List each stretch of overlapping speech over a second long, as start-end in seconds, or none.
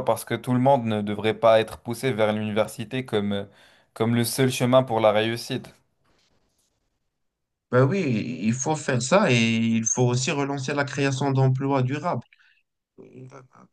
none